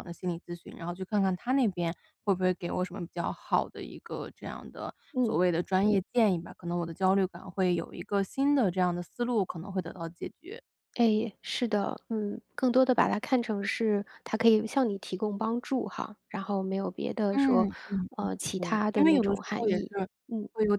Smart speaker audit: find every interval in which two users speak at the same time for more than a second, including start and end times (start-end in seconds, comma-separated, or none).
18.6-20.1